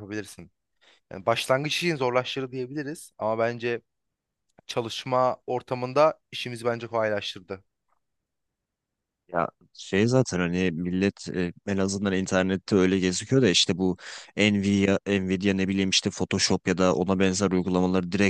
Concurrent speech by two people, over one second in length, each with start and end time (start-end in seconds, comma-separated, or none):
none